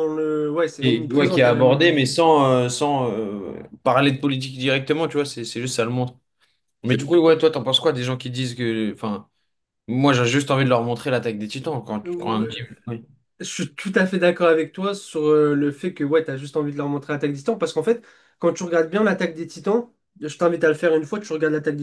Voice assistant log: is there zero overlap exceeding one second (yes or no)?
no